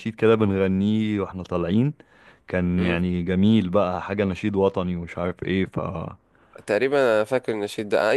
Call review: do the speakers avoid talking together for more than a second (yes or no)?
yes